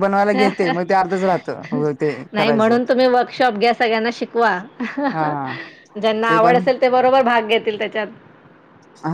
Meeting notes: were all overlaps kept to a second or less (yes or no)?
yes